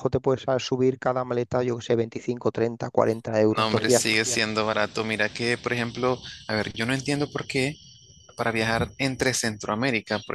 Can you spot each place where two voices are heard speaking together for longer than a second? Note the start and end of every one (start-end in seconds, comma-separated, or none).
none